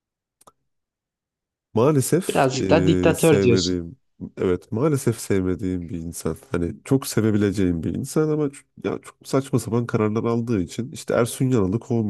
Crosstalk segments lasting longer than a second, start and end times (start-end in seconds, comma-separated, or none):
2.3-3.8